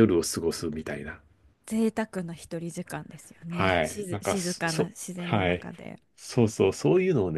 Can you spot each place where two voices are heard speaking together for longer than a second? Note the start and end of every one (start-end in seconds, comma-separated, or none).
3.5-5.7